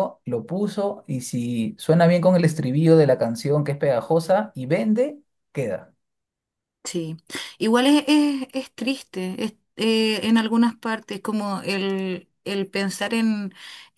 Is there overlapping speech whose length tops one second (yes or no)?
no